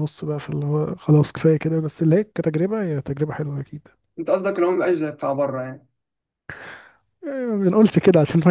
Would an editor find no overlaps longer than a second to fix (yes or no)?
yes